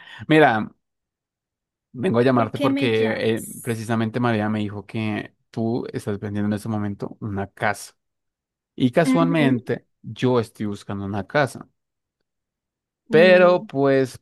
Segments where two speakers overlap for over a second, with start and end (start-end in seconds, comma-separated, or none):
2.4-3.8